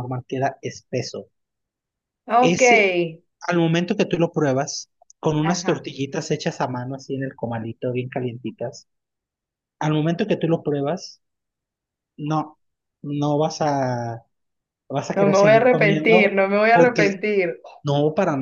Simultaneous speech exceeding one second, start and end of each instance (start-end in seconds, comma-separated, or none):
15.2-17.2